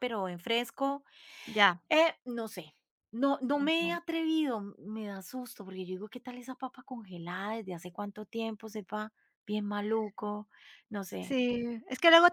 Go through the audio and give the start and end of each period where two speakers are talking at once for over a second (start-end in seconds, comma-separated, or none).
none